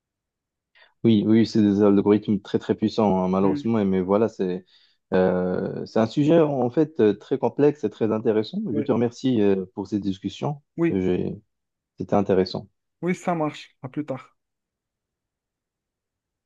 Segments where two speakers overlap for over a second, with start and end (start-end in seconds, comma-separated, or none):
none